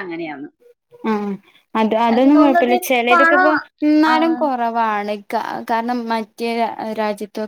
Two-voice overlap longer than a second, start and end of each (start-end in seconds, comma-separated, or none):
2.1-3.5